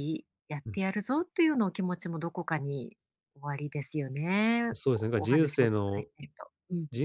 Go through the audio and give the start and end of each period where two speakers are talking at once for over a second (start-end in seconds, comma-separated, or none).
4.7-6.1